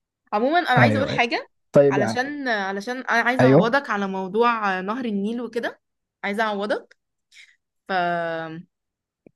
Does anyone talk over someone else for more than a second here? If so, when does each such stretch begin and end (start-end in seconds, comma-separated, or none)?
none